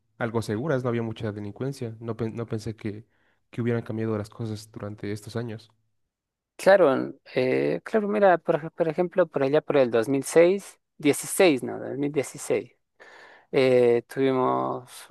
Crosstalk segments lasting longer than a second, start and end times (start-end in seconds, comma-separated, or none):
none